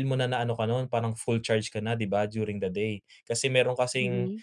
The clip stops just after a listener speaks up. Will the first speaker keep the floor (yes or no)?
yes